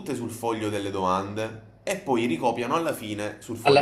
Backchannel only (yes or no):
no